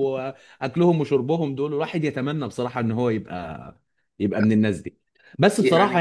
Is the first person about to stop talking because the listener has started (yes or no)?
no